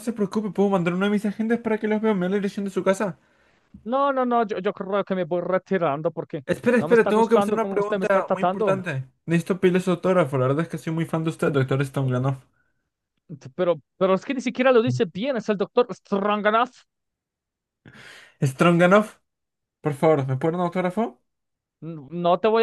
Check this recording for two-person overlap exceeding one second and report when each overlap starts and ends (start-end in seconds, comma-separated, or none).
6.5-8.8